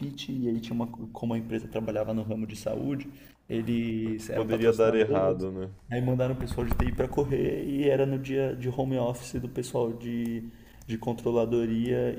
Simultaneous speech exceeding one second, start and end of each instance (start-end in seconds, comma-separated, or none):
4.0-5.5